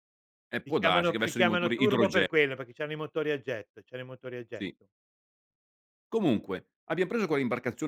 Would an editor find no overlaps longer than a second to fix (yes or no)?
no